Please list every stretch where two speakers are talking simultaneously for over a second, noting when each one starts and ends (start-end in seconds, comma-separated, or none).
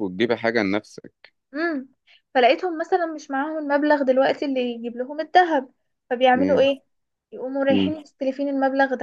none